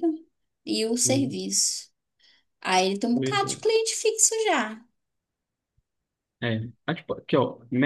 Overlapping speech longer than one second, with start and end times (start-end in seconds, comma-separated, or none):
none